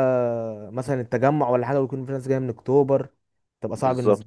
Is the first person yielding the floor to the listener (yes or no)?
yes